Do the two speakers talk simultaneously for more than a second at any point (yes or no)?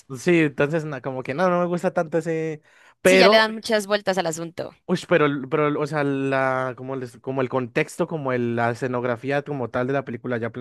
no